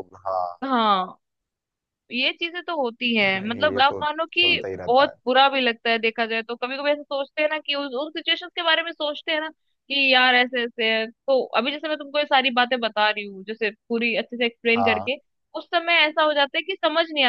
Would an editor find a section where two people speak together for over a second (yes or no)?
yes